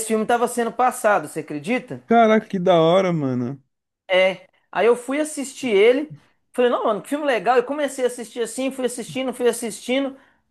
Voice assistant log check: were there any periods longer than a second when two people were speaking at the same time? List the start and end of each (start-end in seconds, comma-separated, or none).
none